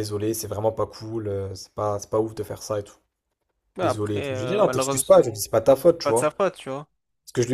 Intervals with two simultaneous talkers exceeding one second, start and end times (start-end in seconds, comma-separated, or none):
3.8-5.2